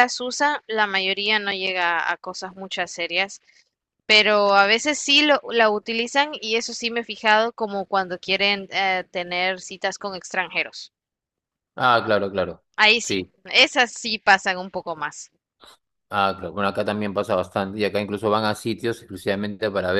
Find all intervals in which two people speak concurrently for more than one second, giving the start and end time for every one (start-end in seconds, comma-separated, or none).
none